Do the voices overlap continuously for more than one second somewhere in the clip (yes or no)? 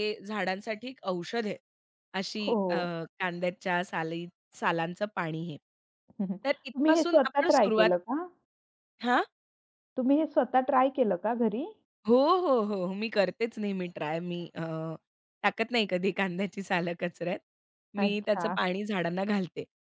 yes